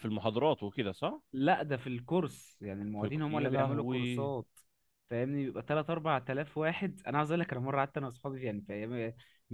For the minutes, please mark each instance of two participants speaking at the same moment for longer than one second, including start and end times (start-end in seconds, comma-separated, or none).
3.0-4.3